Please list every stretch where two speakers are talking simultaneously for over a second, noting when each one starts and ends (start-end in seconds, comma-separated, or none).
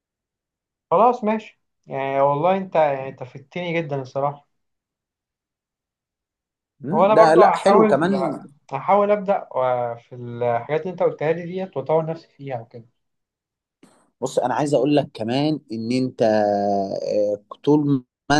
6.9-8.2